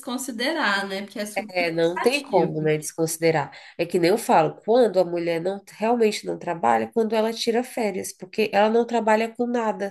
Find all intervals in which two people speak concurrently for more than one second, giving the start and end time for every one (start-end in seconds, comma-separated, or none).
1.4-2.8